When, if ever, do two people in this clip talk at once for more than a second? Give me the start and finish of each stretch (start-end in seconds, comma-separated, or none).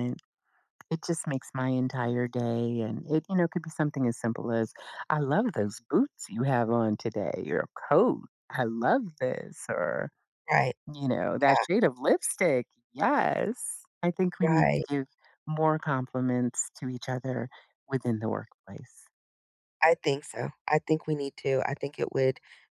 none